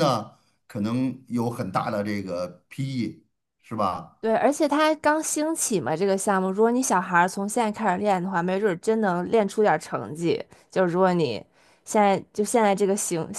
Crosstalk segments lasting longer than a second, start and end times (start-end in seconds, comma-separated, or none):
none